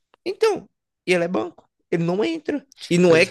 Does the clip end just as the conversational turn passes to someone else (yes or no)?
no